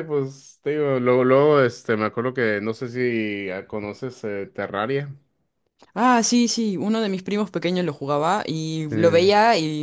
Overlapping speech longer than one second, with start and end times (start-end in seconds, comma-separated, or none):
none